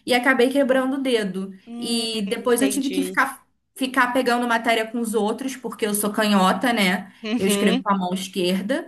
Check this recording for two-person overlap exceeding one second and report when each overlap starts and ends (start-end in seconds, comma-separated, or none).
1.7-3.2